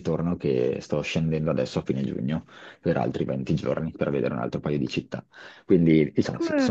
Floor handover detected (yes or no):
yes